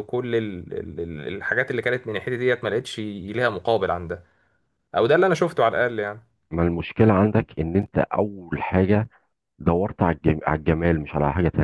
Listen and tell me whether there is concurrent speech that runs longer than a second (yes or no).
no